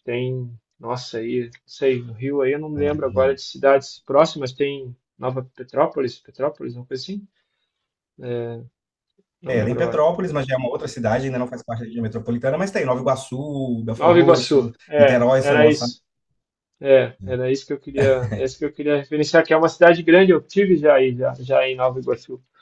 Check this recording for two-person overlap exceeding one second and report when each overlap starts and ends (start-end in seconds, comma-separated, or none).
14.0-15.9